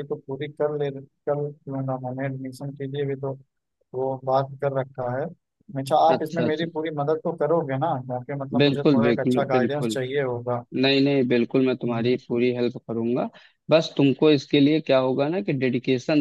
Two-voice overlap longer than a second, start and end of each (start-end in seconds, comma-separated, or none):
8.6-10.0